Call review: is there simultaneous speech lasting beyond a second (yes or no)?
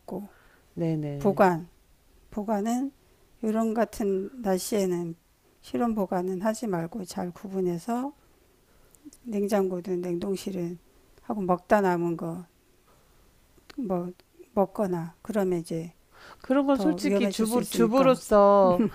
yes